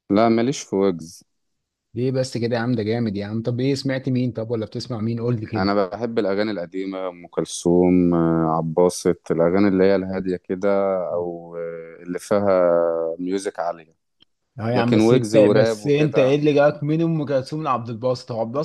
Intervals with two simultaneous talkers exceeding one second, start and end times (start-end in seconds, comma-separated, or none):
14.7-16.4